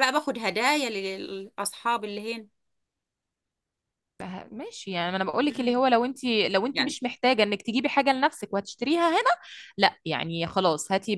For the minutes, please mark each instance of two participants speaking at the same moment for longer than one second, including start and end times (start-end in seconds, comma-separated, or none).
none